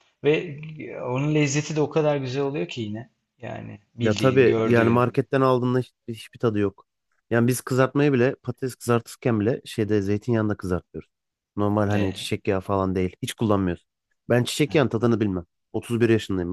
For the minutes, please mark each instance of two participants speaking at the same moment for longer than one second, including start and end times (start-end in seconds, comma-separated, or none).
4.0-5.2